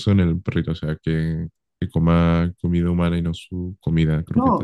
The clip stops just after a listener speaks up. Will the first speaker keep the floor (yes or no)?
no